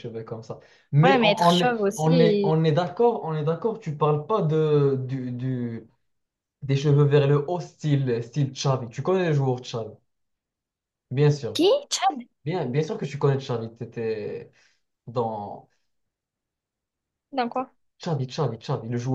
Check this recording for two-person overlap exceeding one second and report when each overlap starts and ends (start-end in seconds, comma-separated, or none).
1.0-2.6